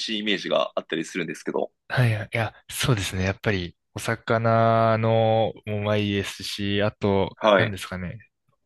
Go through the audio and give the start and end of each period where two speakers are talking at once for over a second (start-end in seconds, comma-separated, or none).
none